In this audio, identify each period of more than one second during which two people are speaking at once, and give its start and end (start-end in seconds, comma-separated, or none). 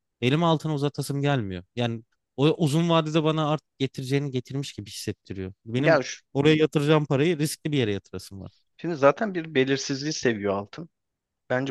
none